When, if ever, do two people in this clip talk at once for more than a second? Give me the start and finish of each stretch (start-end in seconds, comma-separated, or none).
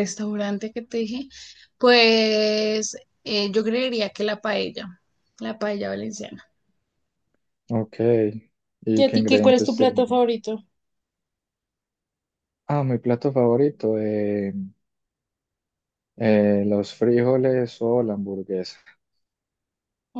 9.0-10.2